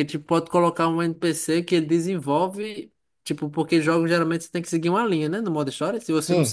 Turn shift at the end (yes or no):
no